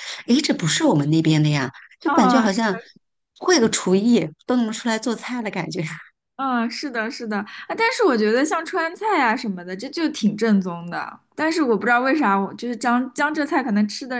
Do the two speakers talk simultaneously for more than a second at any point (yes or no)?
no